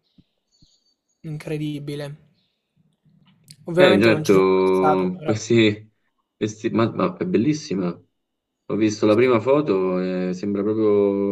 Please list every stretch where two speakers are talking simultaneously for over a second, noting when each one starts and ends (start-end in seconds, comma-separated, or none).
3.8-5.4